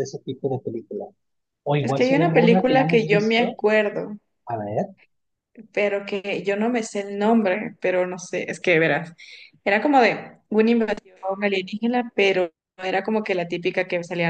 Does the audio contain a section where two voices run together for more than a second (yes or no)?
yes